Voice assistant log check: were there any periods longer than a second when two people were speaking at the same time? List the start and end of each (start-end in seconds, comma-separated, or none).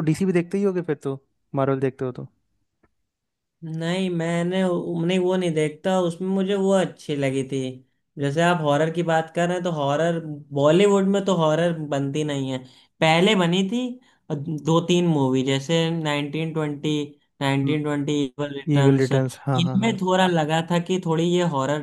18.8-20.0